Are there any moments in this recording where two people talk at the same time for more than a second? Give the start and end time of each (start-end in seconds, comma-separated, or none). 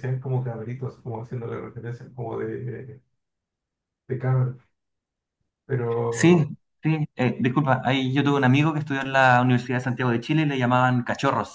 none